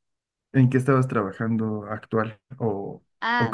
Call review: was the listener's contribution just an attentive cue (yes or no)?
no